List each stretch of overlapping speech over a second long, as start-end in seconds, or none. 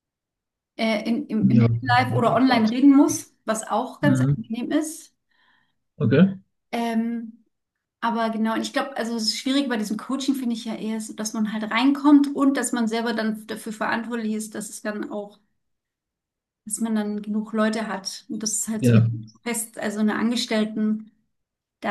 1.4-2.8